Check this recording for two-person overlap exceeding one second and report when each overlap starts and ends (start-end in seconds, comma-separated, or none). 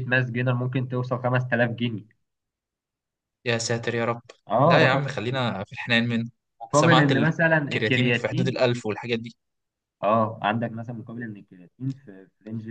6.7-8.6